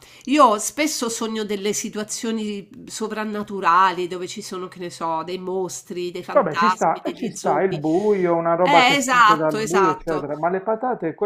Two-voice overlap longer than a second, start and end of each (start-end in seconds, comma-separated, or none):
6.3-7.8, 8.6-10.3